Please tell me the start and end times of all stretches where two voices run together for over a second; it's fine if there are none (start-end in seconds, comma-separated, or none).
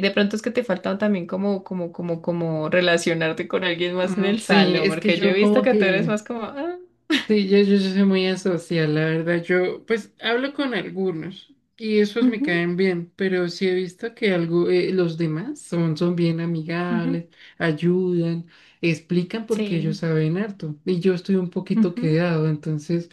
4.0-6.2